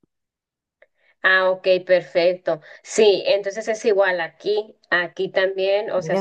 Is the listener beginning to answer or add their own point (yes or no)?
no